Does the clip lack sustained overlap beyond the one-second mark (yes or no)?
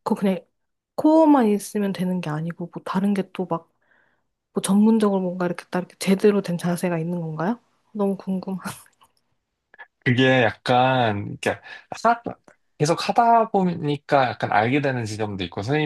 yes